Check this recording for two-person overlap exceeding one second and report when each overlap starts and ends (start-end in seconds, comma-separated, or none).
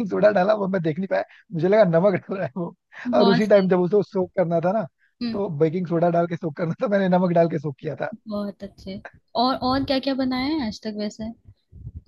none